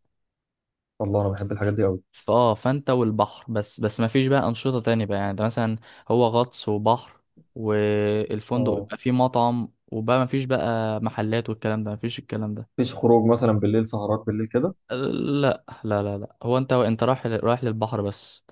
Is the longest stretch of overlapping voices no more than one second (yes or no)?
yes